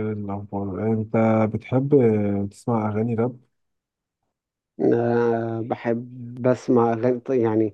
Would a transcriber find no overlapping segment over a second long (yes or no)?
yes